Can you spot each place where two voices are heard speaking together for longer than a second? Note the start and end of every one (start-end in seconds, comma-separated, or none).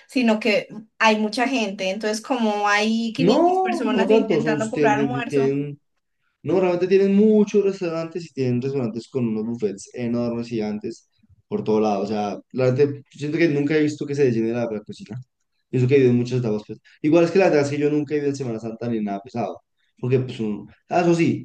3.2-5.6